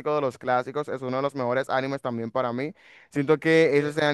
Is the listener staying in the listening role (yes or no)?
yes